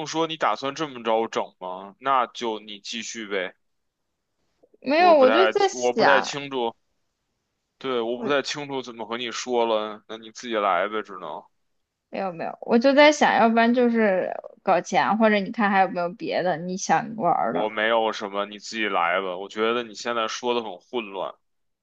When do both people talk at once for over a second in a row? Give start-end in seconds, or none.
4.9-6.4